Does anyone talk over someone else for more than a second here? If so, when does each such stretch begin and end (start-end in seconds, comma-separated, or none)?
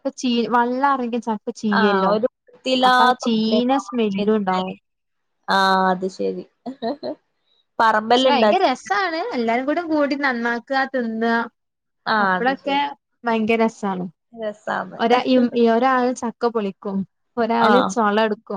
2.9-4.7